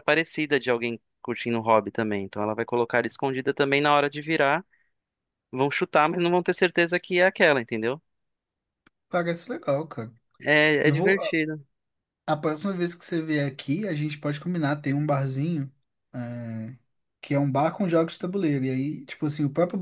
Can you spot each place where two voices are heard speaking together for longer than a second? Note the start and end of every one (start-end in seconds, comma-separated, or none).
none